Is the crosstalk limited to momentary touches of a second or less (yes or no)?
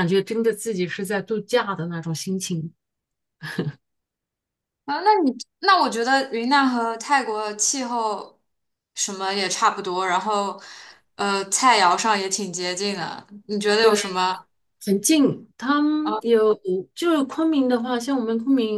yes